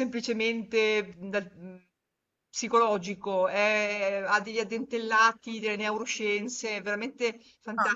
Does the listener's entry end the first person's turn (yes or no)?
yes